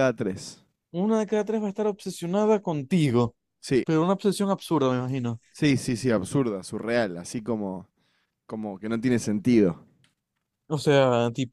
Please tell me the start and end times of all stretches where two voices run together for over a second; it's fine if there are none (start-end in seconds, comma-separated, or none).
none